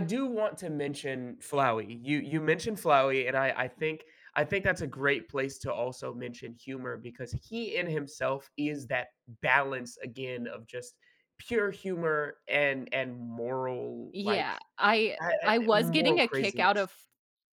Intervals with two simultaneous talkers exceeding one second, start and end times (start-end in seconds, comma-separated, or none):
15.2-16.9